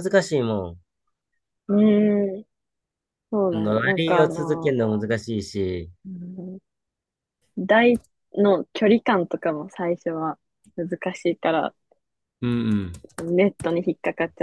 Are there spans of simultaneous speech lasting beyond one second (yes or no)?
yes